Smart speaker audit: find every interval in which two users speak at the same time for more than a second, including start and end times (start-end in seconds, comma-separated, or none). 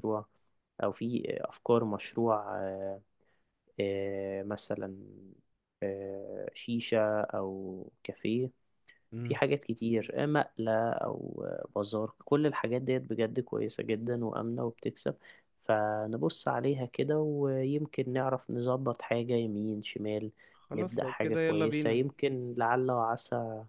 20.7-22.0